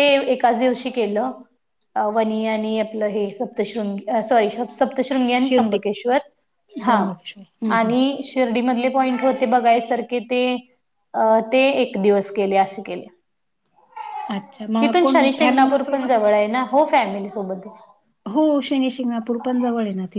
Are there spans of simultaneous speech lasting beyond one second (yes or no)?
yes